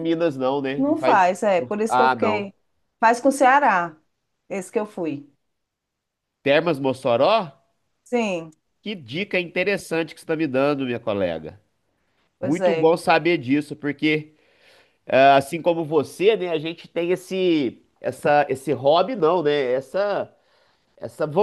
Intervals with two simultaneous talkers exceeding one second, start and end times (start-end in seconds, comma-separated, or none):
0.8-2.5